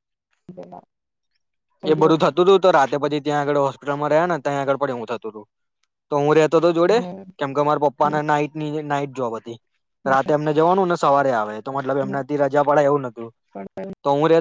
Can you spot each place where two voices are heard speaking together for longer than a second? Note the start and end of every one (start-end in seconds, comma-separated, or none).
none